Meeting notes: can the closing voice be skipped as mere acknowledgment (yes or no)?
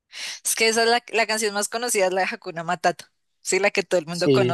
yes